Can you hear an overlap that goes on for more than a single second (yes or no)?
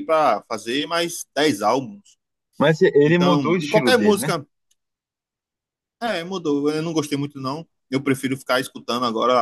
yes